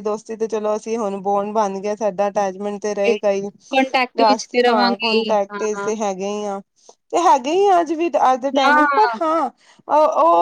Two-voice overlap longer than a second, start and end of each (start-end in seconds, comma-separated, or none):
4.2-5.9